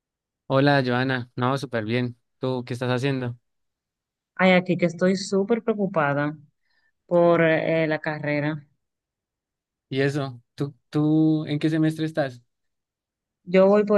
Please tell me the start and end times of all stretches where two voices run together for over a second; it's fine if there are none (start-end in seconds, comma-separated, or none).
none